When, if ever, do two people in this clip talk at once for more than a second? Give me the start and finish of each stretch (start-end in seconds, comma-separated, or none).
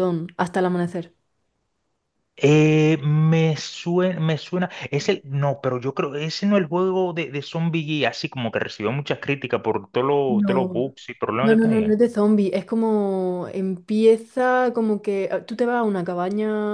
none